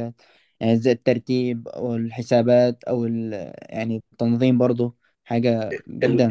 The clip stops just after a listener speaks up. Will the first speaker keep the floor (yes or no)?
no